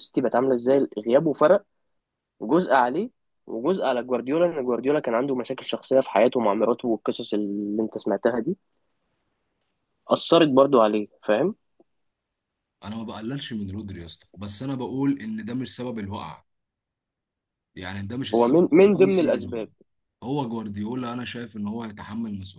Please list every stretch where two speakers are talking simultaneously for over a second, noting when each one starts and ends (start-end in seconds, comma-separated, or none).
18.3-19.7